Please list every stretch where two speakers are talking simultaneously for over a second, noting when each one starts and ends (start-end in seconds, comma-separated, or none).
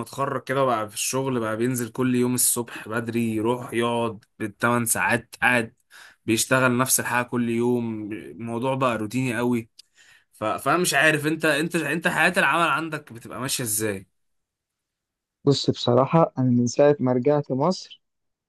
none